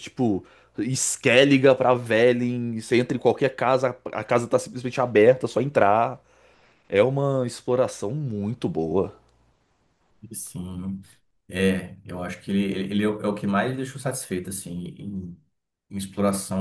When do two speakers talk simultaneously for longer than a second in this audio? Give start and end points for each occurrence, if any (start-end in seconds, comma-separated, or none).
none